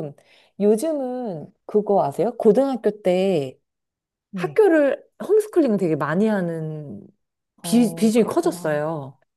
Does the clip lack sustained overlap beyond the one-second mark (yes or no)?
no